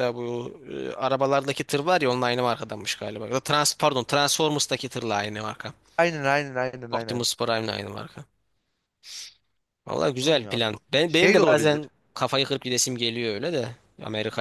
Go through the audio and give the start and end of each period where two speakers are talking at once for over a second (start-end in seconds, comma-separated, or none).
10.2-11.8